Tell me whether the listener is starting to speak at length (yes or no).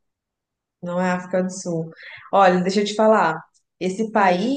no